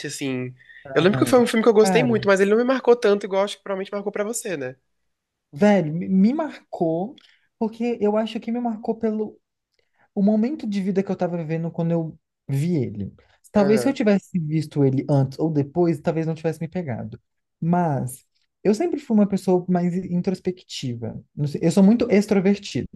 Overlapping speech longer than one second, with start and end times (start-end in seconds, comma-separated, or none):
0.9-2.3